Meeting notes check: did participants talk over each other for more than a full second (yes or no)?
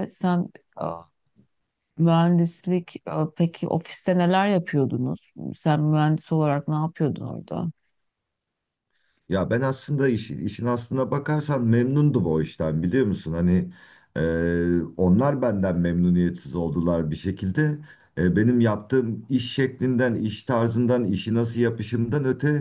no